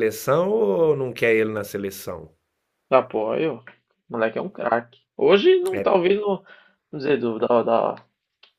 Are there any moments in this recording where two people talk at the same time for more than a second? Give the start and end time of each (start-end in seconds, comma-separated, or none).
none